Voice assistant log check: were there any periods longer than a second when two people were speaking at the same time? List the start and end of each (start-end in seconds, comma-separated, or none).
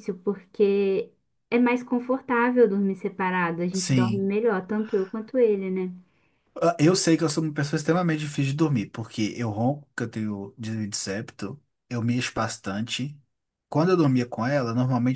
none